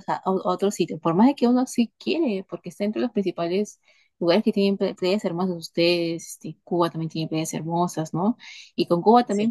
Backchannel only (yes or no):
yes